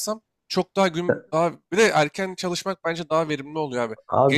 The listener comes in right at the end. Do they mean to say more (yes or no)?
yes